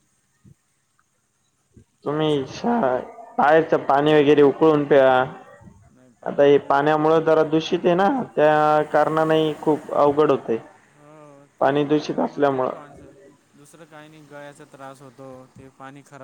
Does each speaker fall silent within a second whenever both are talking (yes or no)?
no